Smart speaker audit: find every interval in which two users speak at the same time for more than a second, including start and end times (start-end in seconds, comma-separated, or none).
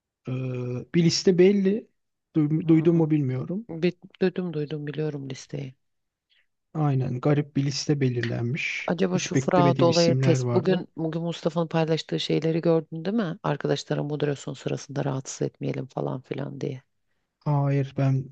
8.9-10.8